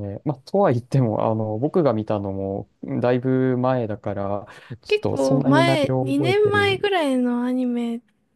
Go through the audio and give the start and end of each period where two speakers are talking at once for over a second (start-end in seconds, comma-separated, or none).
4.9-6.8